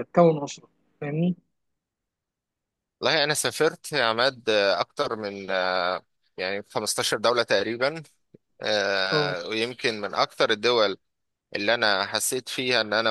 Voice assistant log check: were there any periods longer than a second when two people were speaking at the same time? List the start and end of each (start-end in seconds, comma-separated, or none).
none